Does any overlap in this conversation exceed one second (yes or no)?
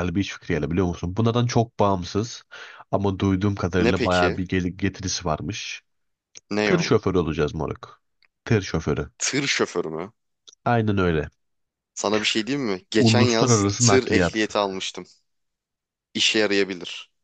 yes